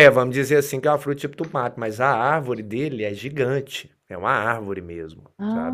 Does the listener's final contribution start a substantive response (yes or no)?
yes